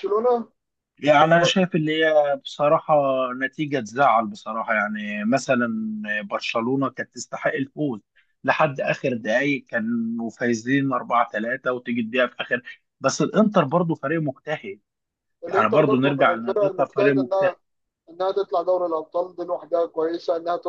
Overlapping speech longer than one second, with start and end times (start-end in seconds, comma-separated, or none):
15.5-17.5